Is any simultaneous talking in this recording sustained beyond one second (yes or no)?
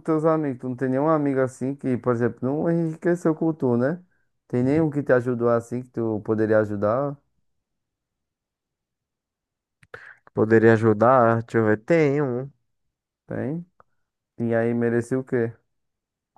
no